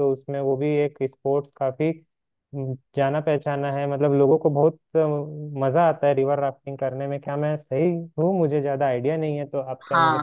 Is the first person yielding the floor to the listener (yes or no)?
yes